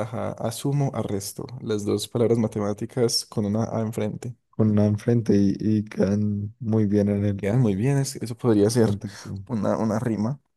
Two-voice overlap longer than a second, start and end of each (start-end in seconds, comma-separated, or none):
none